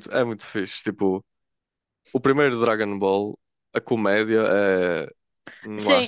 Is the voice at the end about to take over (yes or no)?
yes